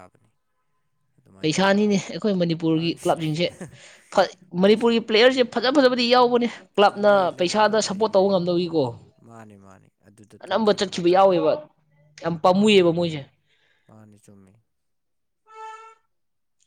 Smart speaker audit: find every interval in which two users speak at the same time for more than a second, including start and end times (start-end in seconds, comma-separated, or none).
6.9-8.4